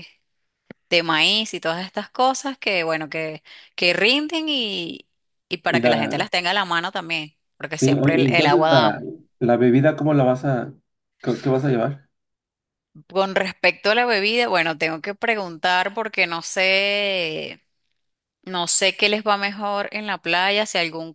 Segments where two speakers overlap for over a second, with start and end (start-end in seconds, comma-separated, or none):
7.7-8.9